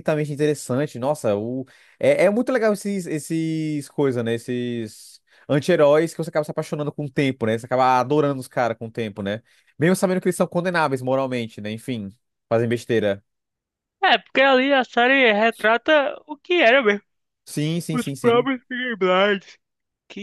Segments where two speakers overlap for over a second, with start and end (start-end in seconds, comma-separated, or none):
none